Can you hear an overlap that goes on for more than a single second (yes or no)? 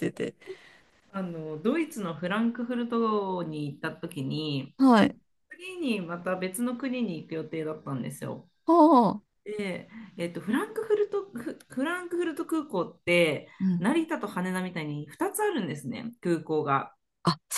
no